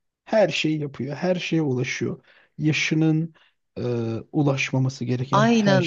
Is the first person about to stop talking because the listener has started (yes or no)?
yes